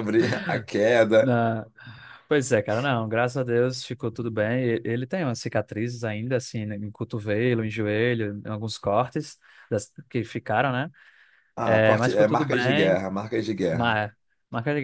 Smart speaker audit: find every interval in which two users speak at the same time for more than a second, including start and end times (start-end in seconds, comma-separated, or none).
11.6-13.0